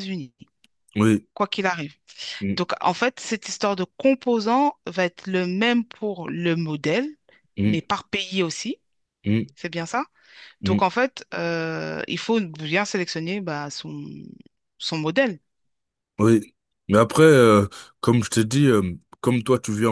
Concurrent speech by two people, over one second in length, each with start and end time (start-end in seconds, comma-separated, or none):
none